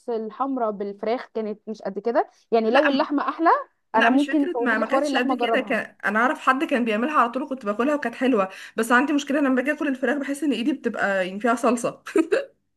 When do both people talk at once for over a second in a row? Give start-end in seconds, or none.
4.0-5.8